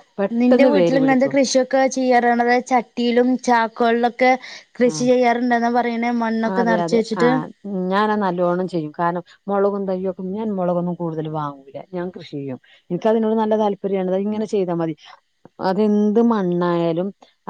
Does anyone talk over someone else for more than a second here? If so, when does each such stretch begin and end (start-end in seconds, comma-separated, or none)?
none